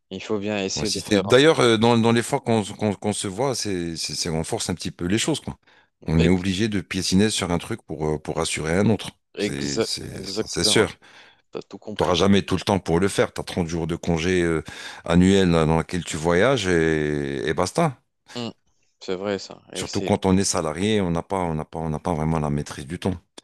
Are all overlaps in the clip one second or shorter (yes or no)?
no